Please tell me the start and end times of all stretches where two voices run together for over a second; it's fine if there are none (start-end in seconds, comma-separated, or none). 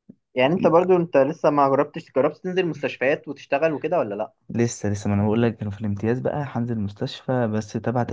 none